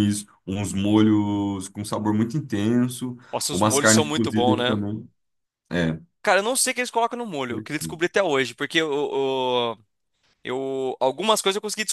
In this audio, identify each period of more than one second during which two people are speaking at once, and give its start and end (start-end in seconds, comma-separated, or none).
3.3-4.8